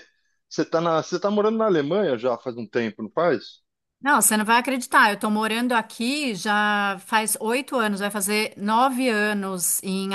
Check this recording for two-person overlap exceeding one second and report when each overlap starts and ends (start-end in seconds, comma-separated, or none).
none